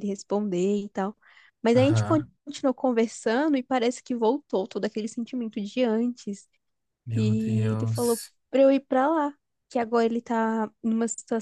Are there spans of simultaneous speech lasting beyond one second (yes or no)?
yes